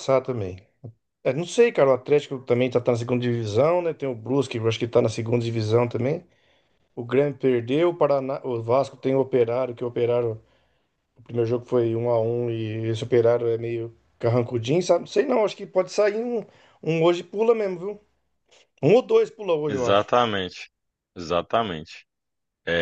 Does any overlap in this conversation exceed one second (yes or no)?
no